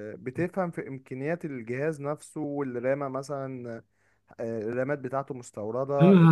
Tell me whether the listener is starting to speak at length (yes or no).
yes